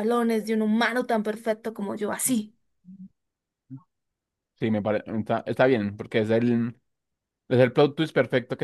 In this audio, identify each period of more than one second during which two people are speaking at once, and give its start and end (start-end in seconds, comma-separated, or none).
none